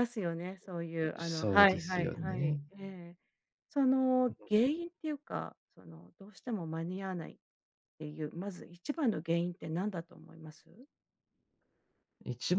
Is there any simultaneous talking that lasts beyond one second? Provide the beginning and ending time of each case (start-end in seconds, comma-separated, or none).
1.2-2.6